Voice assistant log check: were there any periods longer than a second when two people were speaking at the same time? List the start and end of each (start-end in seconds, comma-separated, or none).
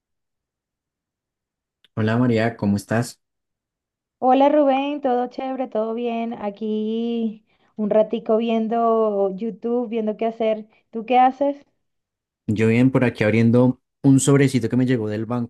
none